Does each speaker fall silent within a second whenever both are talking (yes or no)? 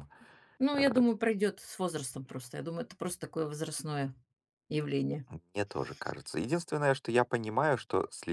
yes